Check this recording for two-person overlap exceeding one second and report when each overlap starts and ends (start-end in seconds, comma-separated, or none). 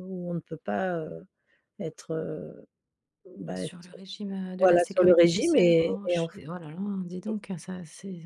4.6-6.4